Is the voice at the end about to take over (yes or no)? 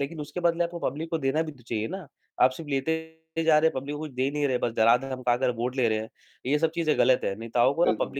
no